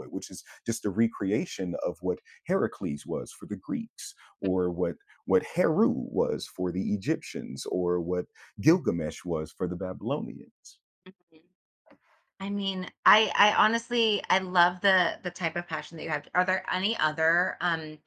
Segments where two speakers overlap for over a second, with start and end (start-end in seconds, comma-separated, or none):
none